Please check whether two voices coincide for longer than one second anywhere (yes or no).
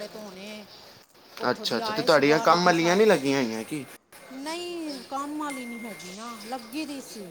yes